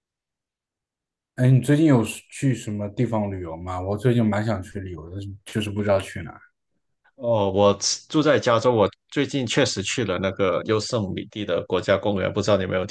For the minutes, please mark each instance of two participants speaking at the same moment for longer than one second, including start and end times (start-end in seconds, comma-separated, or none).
none